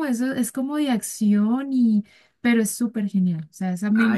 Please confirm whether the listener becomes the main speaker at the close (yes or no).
yes